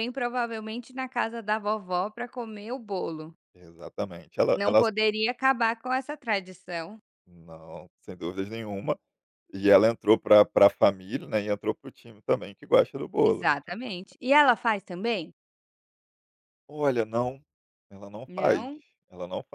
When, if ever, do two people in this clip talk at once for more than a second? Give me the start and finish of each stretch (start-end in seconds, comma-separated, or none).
none